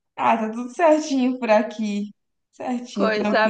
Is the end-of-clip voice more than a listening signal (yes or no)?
yes